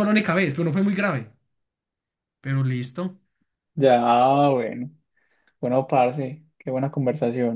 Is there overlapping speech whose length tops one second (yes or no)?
no